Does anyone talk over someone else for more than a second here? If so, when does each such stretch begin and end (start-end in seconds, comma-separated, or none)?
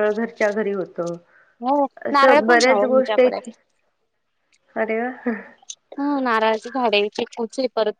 2.1-3.4